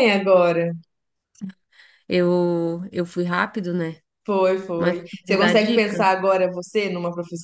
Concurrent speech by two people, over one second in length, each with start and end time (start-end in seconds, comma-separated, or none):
4.8-6.1